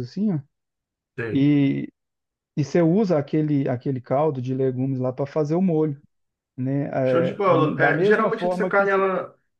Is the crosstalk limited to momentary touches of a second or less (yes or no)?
no